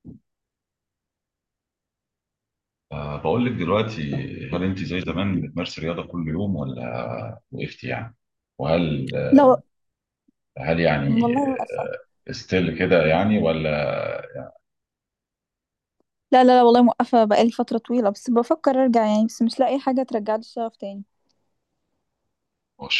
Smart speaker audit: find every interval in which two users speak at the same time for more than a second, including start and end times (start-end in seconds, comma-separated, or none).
none